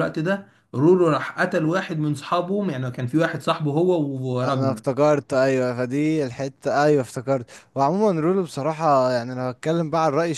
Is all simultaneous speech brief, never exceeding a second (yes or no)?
yes